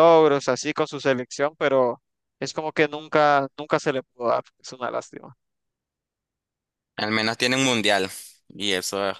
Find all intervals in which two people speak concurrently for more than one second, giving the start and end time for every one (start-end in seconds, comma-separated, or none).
none